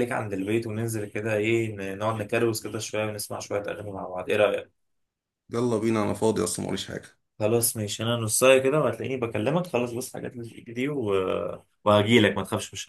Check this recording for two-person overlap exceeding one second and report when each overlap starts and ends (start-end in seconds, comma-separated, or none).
none